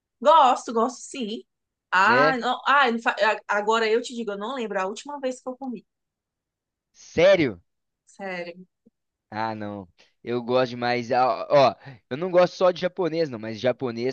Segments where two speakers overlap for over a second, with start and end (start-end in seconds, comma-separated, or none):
none